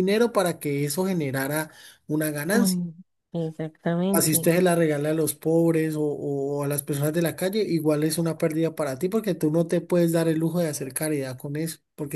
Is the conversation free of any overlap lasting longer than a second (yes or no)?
yes